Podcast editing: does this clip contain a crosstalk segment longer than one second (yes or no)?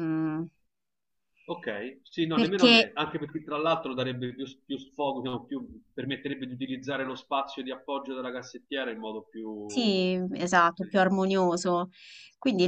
no